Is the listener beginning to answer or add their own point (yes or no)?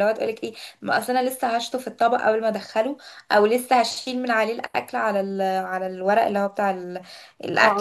yes